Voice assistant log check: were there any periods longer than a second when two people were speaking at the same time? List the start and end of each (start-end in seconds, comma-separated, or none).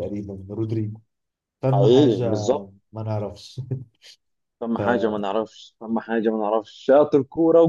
none